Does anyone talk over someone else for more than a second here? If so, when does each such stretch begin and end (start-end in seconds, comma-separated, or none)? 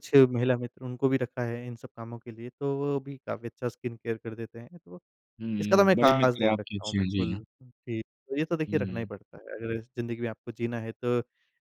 5.6-7.4